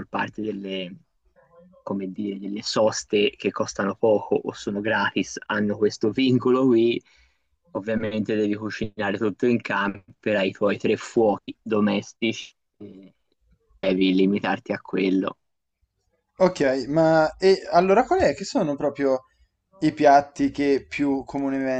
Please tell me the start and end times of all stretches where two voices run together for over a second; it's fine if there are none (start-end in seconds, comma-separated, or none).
none